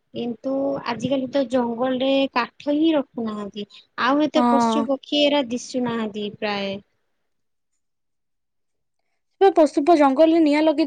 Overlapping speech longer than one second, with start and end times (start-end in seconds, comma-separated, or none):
none